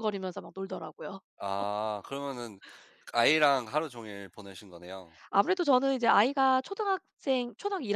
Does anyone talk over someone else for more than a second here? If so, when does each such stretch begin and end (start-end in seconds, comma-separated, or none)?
none